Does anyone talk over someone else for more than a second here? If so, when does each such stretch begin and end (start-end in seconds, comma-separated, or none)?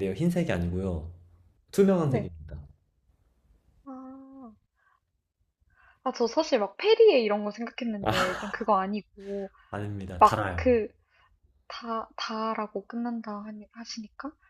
none